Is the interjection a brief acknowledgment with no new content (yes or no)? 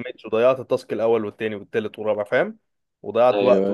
yes